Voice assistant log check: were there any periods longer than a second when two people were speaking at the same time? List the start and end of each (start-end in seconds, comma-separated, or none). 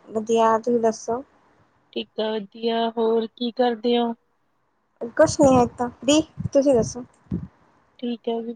none